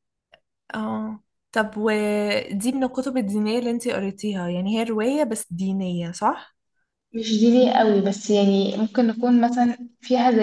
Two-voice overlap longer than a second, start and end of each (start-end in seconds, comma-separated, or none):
none